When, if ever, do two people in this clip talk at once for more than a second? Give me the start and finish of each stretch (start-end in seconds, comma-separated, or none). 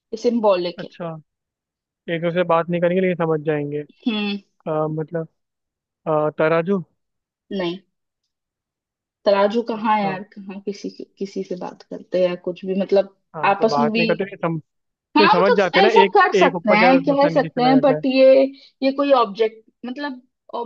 15.2-18.0